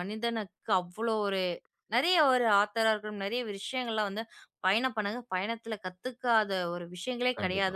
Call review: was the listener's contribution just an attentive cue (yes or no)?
yes